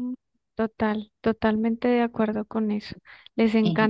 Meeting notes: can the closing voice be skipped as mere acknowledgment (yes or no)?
yes